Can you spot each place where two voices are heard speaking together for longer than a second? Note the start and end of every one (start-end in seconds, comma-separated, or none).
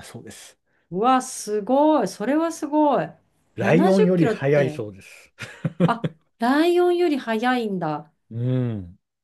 3.6-4.8